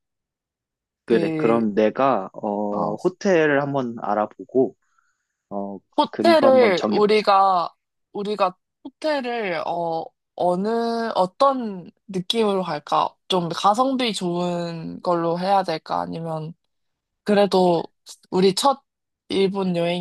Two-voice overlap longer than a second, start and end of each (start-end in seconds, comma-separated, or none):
6.0-7.2